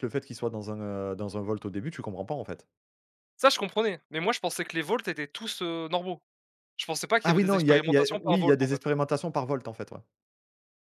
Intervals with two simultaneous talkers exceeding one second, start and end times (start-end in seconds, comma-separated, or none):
7.2-8.8